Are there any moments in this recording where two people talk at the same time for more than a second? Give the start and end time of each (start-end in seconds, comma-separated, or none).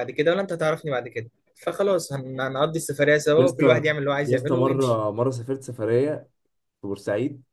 3.4-5.0